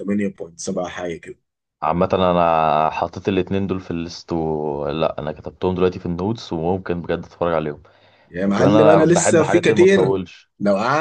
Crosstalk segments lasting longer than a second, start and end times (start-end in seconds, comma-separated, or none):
8.4-10.2